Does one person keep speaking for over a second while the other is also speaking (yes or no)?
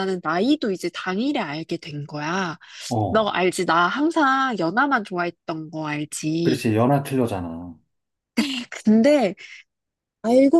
no